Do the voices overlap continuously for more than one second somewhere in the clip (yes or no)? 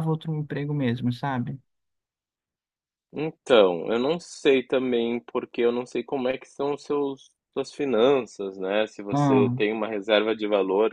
no